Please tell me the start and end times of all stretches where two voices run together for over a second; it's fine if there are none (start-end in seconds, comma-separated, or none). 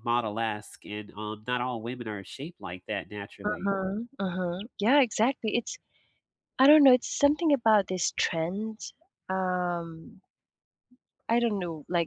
none